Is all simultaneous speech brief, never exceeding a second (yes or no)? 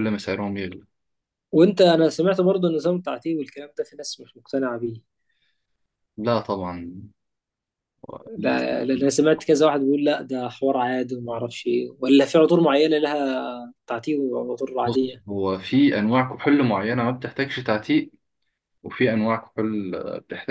yes